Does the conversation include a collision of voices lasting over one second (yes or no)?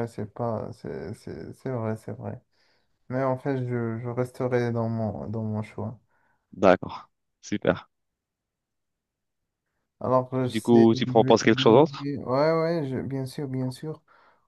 yes